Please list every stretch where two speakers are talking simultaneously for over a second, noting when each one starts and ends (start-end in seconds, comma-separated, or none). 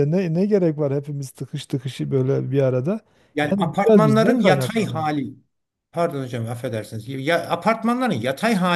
3.4-5.1